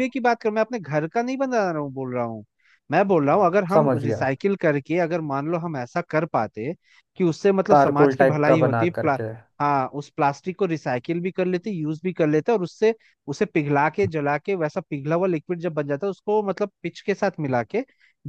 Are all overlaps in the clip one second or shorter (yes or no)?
no